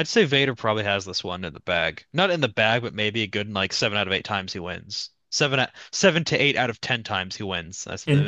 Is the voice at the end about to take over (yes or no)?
yes